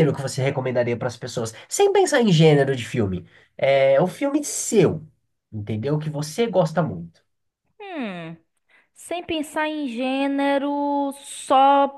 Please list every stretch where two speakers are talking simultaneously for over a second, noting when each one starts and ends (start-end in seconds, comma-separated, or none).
none